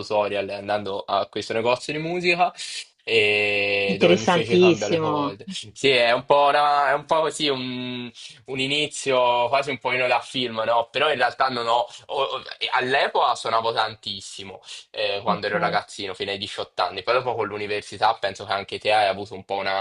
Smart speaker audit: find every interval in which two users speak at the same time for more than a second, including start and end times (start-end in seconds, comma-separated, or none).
3.9-5.4